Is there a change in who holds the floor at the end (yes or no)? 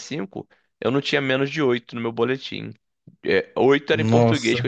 no